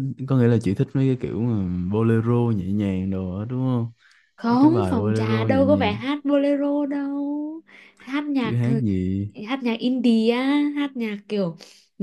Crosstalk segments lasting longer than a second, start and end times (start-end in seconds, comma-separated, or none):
4.5-5.9